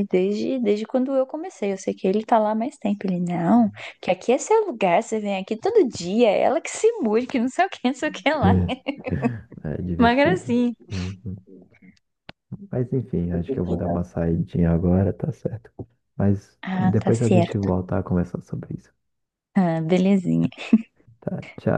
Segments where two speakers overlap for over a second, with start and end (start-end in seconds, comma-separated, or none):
16.6-17.9